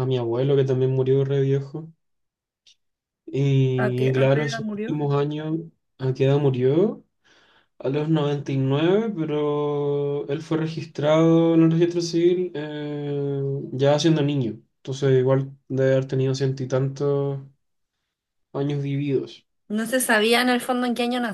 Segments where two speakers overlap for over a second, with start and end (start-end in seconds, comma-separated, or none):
3.8-5.0